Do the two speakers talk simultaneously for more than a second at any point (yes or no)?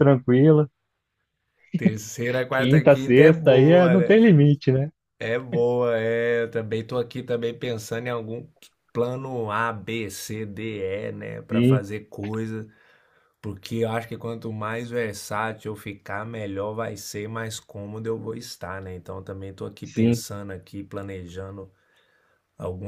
yes